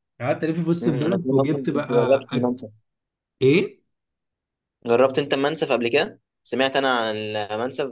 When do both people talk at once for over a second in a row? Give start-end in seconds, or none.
0.8-2.5